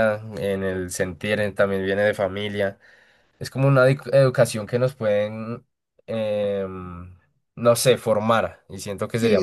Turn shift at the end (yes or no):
yes